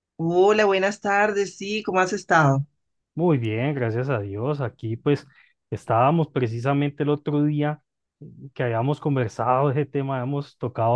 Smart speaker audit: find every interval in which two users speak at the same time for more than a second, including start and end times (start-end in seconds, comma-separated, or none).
none